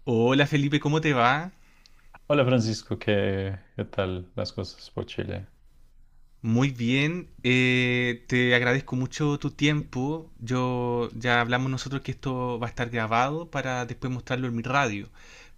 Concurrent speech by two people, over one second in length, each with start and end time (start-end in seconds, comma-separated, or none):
none